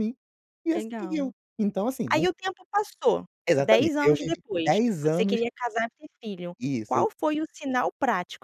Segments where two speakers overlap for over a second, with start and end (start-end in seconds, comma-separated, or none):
3.5-5.4